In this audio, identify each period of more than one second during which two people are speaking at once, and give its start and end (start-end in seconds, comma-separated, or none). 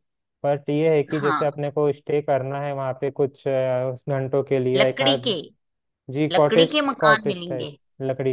6.3-7.7